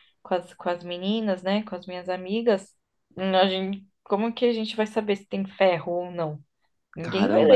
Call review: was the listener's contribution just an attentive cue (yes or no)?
no